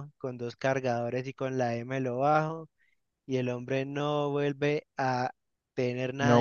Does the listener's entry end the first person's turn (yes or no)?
yes